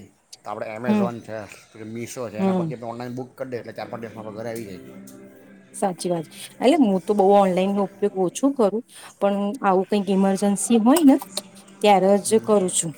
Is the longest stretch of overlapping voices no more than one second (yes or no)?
yes